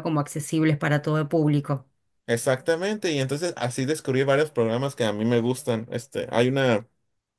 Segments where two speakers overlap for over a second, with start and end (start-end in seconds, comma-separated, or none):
none